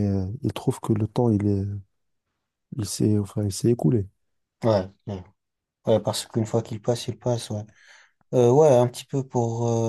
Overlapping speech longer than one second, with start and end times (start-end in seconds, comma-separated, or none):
none